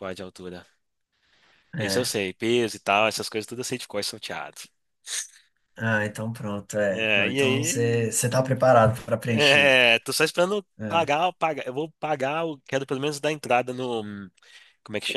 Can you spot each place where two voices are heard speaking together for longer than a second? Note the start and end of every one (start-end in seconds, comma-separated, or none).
6.9-8.2